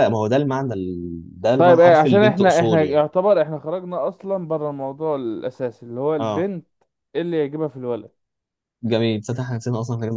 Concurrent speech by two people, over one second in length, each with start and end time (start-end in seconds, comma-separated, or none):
1.6-3.0